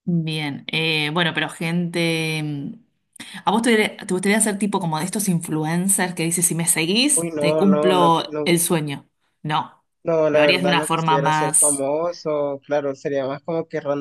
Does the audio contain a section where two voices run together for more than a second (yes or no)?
yes